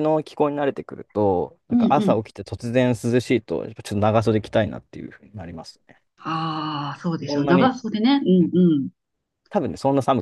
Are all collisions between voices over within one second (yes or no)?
yes